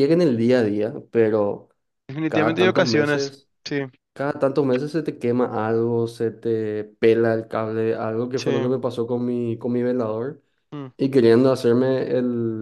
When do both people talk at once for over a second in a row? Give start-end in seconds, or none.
2.3-3.5